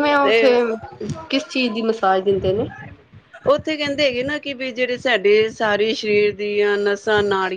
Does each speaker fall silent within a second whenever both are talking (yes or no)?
yes